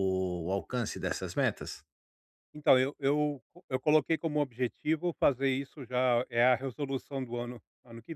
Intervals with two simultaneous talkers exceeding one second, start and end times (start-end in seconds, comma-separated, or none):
none